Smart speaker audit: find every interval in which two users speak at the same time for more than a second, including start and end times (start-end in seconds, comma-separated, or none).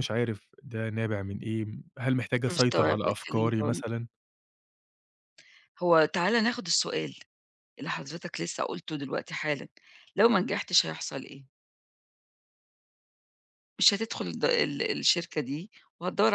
2.5-3.8